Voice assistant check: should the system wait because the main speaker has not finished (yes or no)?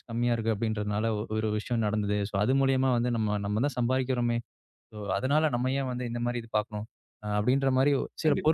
yes